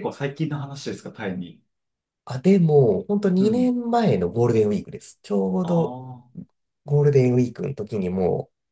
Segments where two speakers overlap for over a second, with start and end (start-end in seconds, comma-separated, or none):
none